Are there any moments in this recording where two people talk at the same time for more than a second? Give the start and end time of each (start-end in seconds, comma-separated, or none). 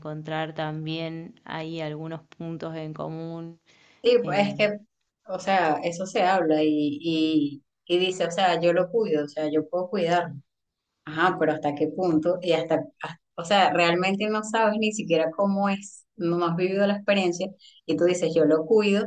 none